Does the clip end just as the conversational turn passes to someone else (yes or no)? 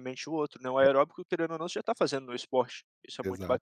yes